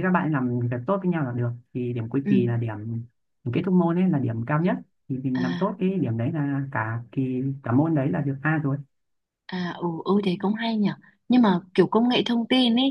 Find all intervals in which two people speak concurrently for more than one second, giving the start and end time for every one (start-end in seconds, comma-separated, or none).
none